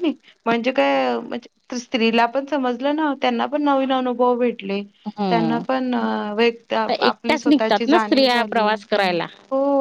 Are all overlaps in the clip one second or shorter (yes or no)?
no